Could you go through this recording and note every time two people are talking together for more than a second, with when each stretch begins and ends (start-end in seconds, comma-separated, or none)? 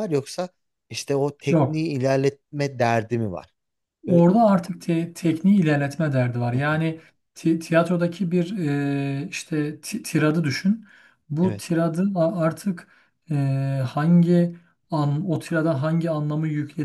none